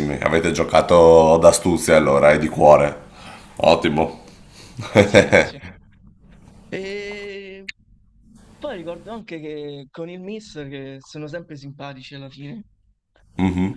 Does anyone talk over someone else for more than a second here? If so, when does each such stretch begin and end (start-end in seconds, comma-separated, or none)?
none